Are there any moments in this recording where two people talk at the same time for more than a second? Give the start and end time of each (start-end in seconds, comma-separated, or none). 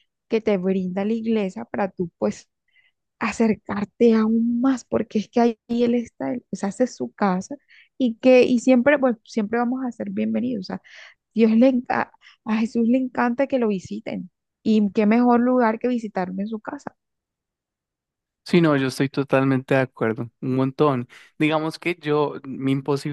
none